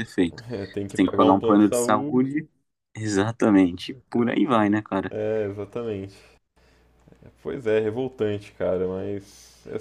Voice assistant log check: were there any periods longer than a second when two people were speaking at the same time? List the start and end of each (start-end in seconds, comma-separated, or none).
0.9-2.5